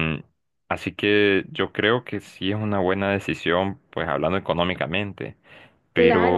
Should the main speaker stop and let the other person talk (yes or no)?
yes